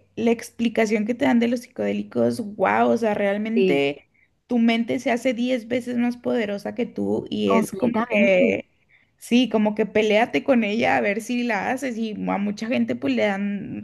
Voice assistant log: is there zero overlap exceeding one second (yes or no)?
no